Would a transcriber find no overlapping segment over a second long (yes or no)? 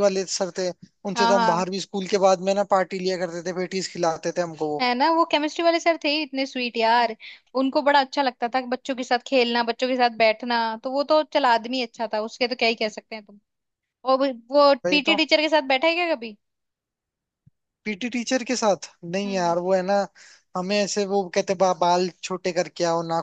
yes